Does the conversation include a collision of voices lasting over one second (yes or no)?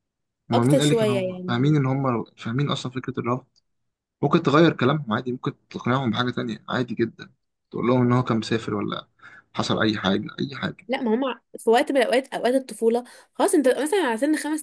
yes